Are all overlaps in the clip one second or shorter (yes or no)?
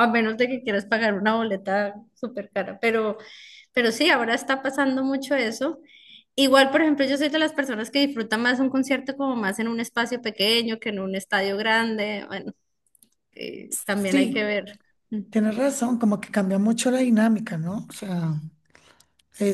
yes